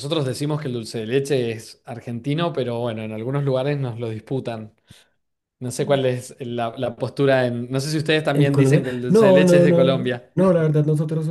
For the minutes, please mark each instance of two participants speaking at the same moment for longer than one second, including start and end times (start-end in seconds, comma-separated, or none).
8.4-10.3